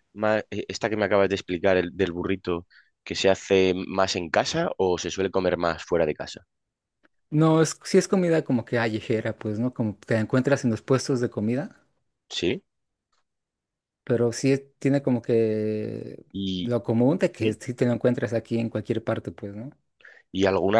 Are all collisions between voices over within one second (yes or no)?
yes